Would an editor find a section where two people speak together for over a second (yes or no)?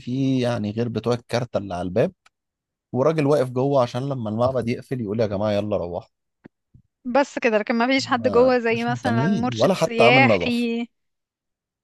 yes